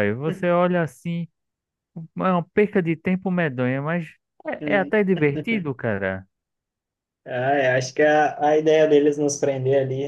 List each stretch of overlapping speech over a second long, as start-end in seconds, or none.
none